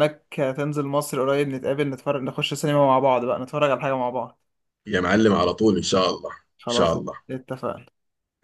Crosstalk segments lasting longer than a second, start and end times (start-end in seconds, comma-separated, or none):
none